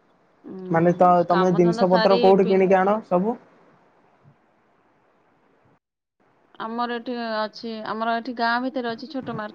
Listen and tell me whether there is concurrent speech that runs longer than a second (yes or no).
yes